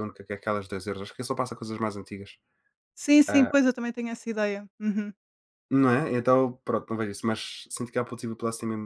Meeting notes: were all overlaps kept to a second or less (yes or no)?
yes